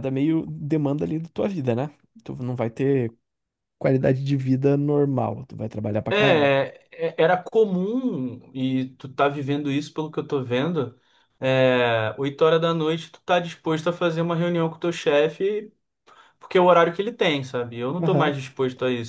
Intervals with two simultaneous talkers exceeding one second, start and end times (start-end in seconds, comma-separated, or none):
none